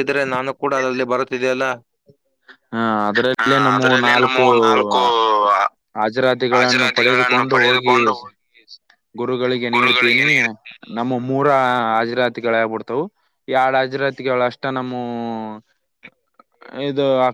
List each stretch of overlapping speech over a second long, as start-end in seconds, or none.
6.5-7.9